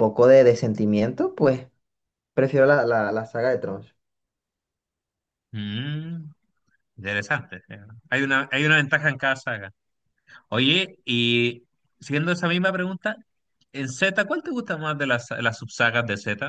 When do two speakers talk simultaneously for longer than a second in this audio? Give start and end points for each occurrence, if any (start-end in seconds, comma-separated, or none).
none